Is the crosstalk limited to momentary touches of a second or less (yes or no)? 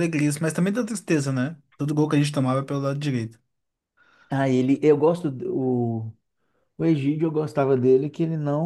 yes